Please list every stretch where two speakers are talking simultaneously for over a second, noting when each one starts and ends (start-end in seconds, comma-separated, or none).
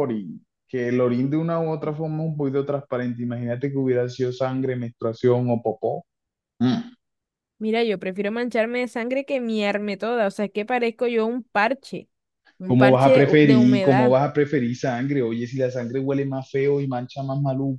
12.6-14.2